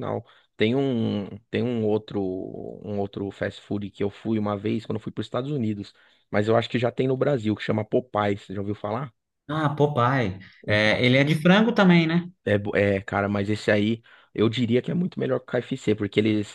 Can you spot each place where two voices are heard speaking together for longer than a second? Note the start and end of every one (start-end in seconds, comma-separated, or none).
none